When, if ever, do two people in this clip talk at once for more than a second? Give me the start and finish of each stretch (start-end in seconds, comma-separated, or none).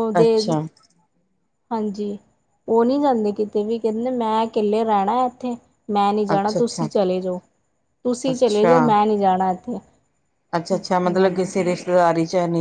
none